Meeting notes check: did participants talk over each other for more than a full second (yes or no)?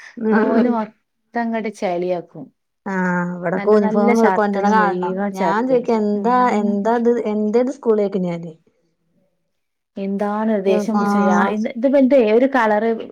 yes